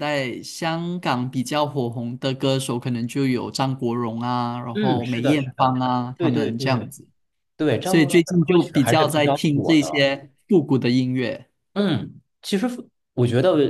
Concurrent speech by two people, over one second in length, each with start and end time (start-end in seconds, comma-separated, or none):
4.7-6.9, 7.8-9.9